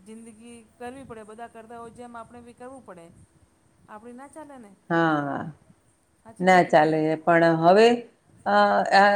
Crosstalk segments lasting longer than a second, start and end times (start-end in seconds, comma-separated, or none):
none